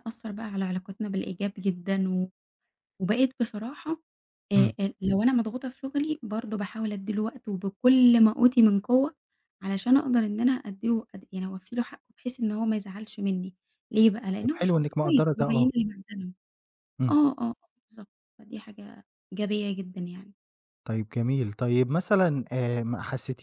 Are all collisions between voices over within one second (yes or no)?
no